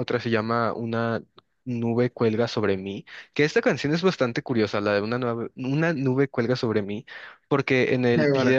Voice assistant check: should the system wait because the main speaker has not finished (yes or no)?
yes